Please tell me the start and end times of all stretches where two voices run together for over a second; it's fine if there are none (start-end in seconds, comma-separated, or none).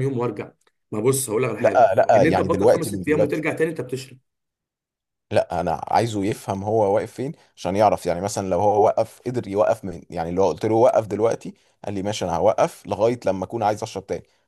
1.6-3.5